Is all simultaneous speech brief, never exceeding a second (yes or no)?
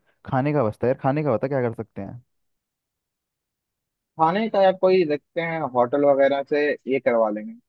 yes